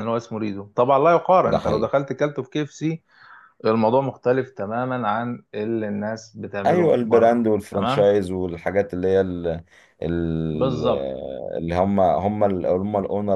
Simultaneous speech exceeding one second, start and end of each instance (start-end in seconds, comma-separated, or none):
6.7-8.1